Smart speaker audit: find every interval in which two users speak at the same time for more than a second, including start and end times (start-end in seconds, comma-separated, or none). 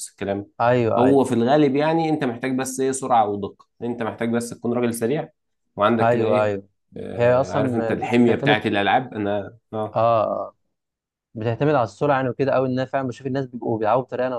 7.2-8.6